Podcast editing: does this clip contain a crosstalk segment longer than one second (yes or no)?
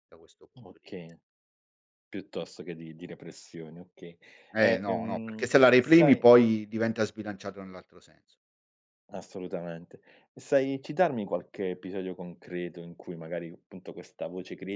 yes